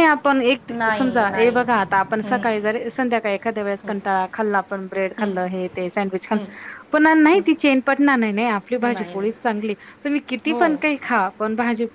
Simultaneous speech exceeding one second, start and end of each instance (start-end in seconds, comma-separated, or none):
0.7-2.4